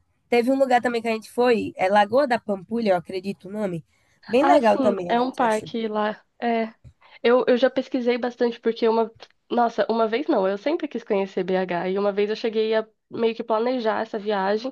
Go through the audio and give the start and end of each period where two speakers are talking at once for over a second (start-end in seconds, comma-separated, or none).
4.4-5.7